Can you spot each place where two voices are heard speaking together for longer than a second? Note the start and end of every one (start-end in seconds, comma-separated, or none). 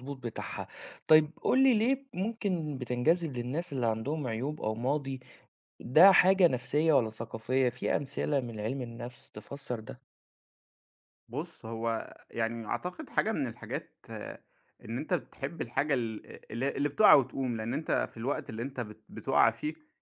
none